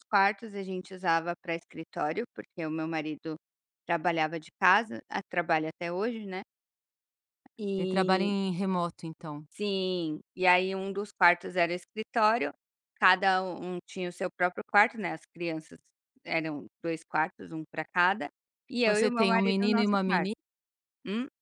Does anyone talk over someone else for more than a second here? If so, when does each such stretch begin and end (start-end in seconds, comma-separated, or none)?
18.8-20.3